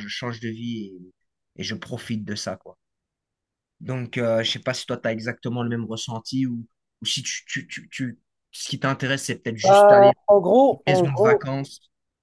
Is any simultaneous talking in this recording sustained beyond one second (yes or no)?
yes